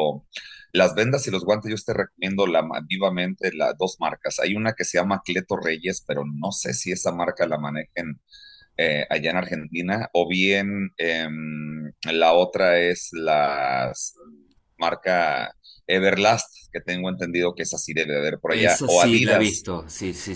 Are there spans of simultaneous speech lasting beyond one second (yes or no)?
yes